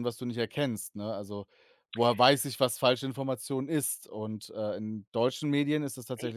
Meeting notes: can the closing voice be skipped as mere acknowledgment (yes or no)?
yes